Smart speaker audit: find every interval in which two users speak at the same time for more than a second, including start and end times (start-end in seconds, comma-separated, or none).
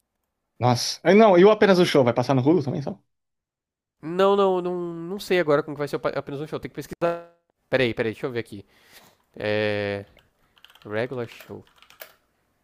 none